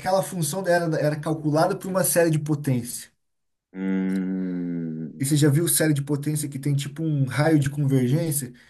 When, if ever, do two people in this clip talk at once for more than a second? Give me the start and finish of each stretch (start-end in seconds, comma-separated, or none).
none